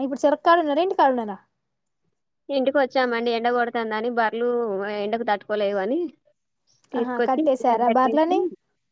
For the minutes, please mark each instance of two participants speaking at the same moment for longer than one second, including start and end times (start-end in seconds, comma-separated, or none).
7.0-8.4